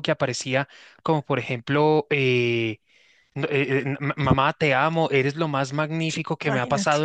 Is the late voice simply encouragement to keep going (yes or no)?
yes